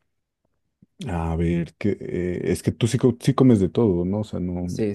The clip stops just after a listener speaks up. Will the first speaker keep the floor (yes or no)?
no